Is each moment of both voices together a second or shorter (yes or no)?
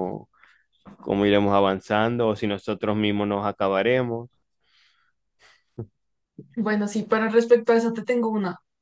yes